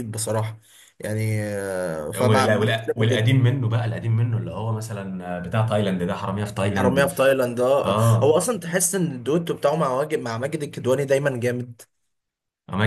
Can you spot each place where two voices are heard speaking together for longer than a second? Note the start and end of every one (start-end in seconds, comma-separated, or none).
2.2-3.4